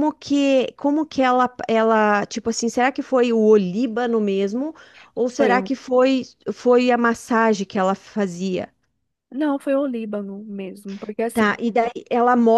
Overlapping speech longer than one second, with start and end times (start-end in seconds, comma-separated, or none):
none